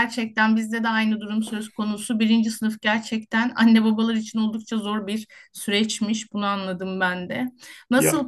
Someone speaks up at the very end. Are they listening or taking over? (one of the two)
listening